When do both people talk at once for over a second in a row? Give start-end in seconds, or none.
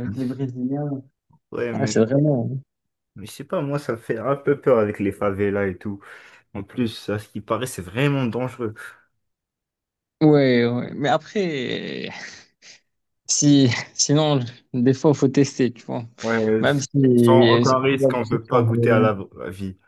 17.6-19.1